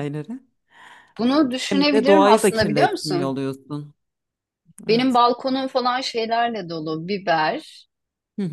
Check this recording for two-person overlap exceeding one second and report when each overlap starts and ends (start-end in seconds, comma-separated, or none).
1.7-3.4